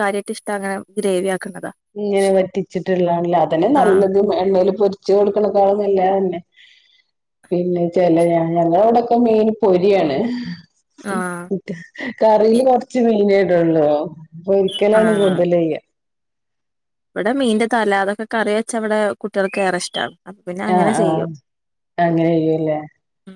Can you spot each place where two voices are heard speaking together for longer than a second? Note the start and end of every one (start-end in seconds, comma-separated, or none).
none